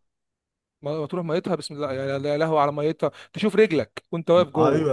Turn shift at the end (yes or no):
yes